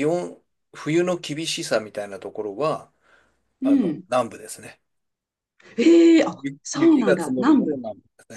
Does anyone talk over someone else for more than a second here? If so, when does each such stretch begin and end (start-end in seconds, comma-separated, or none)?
6.3-7.8